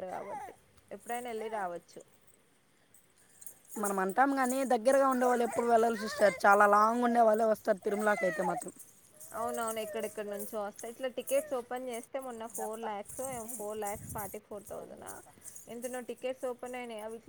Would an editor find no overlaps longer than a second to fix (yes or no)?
yes